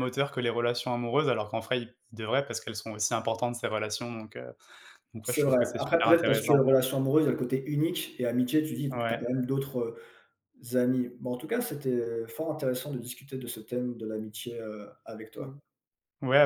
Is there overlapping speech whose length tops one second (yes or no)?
yes